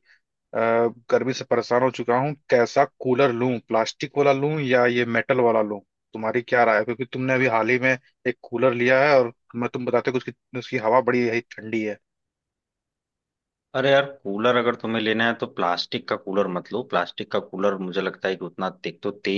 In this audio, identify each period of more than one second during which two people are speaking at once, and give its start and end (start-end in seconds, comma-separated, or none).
none